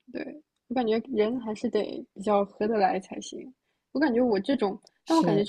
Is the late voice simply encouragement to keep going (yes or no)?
yes